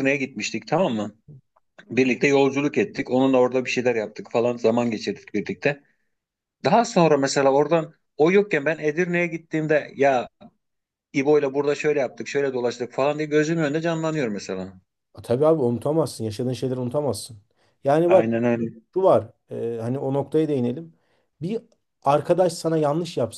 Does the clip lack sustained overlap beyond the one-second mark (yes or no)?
yes